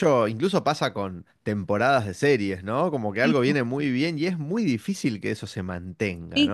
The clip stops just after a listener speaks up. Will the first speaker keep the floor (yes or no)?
no